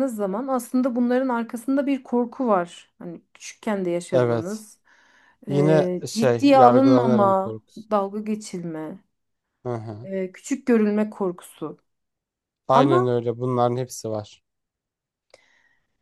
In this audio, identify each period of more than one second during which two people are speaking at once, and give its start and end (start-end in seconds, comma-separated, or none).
5.5-7.9